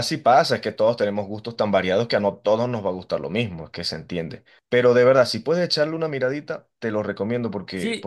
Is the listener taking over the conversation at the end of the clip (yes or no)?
no